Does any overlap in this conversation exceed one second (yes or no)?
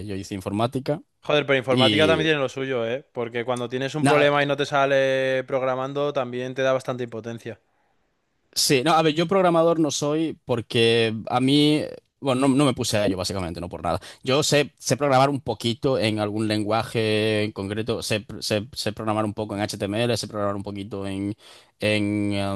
no